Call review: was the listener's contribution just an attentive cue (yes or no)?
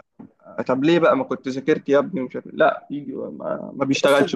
no